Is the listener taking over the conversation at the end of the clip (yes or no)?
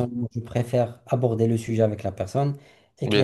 no